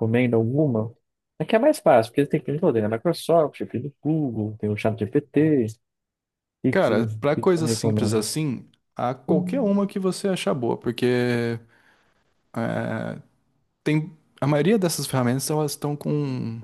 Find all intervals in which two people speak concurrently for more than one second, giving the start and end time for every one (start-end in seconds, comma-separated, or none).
6.7-8.3